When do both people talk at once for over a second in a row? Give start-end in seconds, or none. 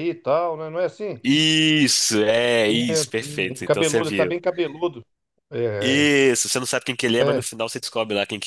2.7-4.4